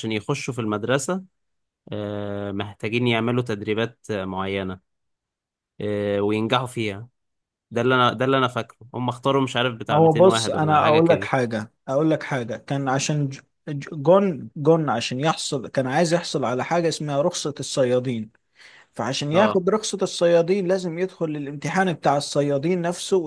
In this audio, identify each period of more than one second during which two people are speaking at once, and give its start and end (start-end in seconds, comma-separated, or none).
9.9-11.3